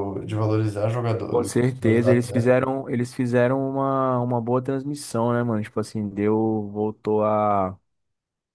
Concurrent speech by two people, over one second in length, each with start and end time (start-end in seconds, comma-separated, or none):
1.3-2.7